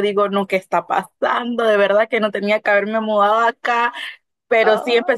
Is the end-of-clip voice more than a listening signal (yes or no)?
no